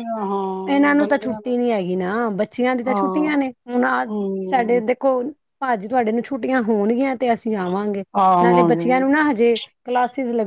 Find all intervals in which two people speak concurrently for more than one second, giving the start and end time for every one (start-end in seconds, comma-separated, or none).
none